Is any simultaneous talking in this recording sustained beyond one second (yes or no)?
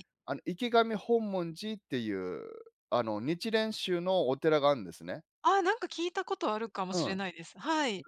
no